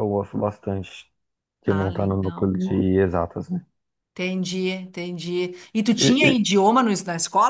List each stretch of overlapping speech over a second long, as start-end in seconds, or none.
1.7-2.9